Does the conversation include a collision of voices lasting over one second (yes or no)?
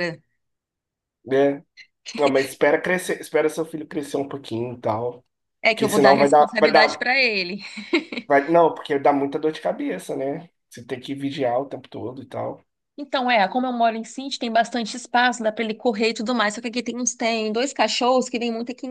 yes